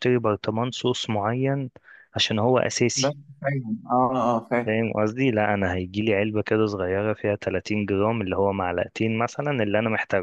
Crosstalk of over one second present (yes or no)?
no